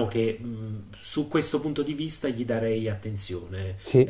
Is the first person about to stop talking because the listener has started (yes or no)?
no